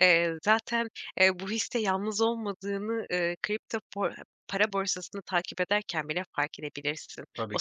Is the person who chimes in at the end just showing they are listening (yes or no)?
yes